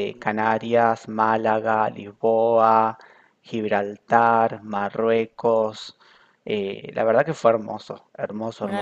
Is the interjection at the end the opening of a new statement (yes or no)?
no